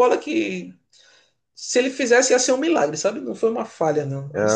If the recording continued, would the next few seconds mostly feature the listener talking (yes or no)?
yes